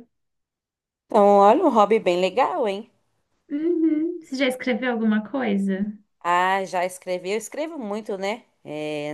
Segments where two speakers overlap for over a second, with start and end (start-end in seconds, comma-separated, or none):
none